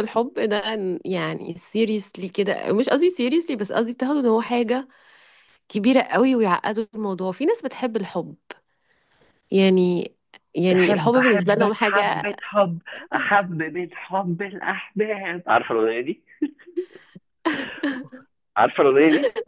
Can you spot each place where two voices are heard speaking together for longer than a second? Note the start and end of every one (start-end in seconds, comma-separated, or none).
10.7-12.3